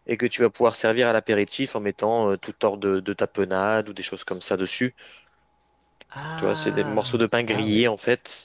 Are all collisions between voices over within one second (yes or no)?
no